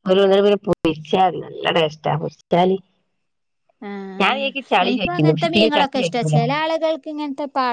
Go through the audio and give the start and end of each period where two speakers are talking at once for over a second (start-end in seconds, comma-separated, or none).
4.2-6.4